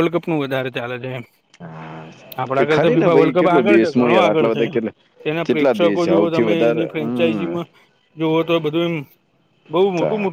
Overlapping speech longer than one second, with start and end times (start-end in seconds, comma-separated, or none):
2.5-4.8, 5.5-7.5